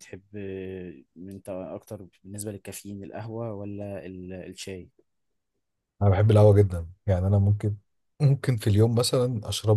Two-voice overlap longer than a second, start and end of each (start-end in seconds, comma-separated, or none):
none